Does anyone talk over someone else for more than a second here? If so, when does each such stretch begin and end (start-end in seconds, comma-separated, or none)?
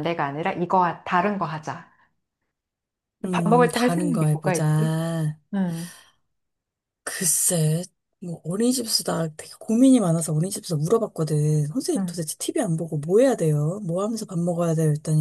3.3-5.0